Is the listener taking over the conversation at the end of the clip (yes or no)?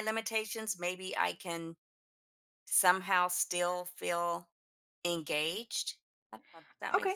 yes